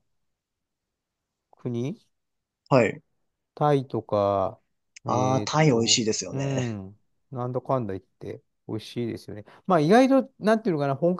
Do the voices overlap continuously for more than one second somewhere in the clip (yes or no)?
yes